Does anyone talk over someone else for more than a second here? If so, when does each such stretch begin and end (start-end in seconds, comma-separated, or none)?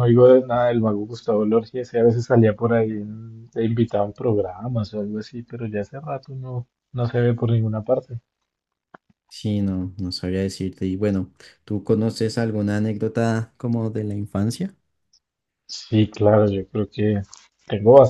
none